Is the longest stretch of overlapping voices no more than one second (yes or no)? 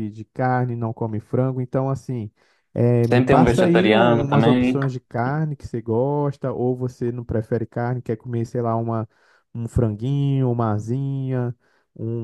no